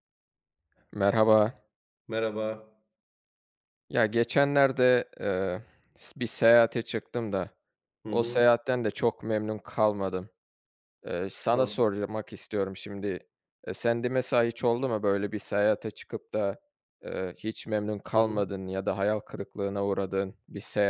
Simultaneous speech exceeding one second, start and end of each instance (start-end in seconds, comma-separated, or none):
none